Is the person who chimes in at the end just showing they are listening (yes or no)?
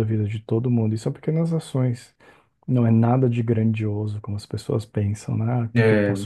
yes